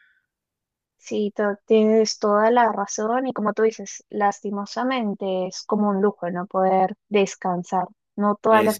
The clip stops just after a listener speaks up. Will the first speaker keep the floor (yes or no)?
yes